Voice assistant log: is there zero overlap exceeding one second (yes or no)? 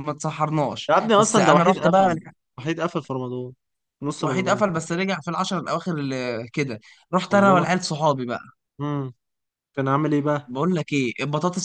no